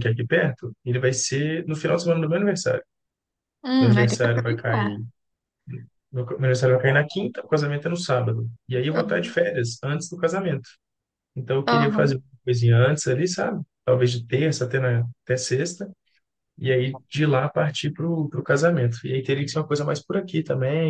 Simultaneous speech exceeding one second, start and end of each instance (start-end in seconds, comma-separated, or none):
3.8-5.0